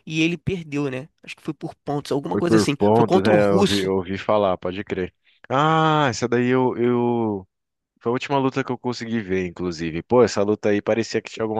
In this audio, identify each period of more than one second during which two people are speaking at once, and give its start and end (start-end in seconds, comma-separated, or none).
2.3-3.9